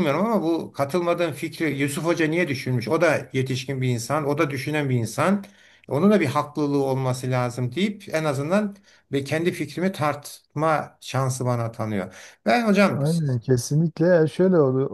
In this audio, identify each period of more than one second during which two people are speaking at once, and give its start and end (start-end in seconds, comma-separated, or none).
none